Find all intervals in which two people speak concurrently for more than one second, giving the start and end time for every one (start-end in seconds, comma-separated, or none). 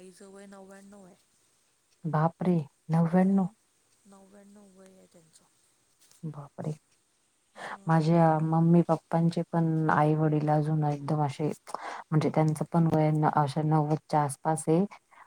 none